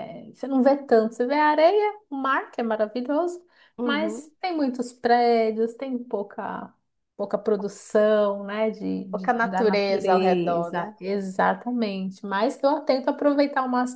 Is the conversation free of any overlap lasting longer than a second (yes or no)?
no